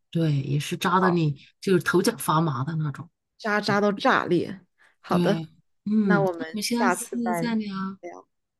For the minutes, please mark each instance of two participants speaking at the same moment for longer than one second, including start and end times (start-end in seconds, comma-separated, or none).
6.0-7.4